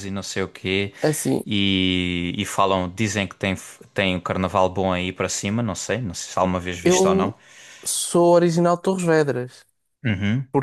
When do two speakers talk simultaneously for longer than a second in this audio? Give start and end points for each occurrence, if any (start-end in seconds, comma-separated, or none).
none